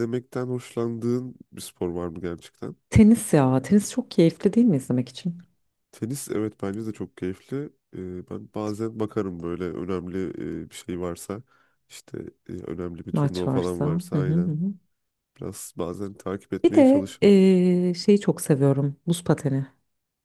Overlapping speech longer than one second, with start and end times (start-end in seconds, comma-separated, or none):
13.1-14.6